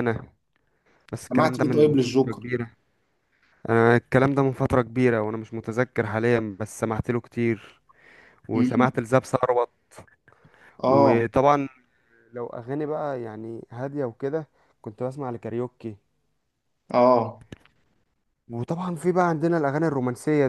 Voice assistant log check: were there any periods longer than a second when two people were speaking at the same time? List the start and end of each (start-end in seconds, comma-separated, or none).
1.2-2.5